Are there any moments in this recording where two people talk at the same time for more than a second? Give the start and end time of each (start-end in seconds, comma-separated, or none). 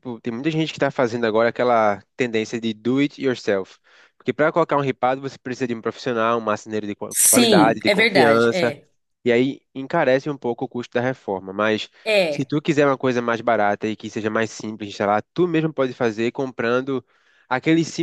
7.1-8.8